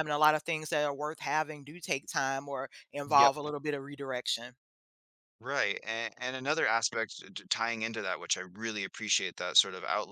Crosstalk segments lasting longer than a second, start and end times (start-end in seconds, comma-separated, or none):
none